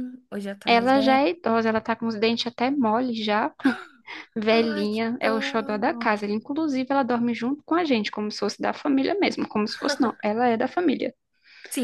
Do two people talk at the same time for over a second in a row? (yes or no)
yes